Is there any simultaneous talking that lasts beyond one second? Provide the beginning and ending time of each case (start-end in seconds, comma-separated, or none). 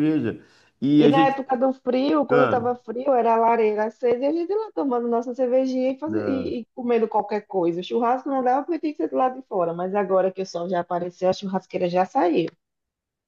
none